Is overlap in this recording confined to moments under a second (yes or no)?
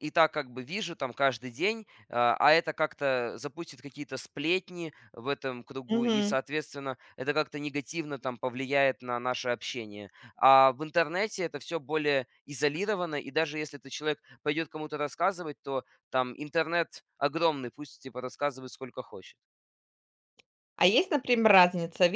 yes